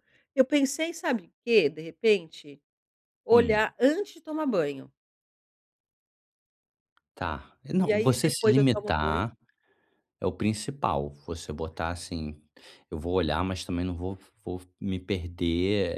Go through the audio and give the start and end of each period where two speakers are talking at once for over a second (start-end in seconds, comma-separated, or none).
7.8-9.2